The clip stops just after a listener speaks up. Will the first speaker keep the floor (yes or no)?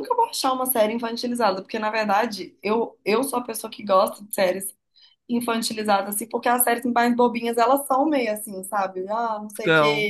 yes